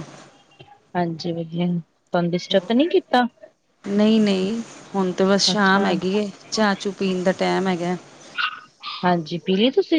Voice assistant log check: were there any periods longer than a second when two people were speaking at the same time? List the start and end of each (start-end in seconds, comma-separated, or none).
none